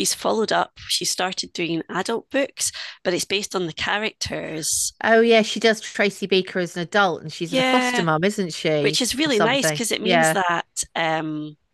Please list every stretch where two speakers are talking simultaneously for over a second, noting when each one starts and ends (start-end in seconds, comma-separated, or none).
8.8-10.4